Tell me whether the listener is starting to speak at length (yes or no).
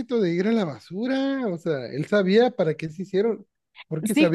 yes